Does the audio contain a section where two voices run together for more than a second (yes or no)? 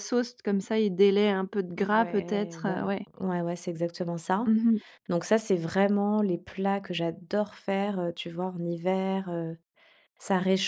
yes